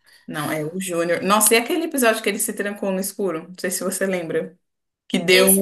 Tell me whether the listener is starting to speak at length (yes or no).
no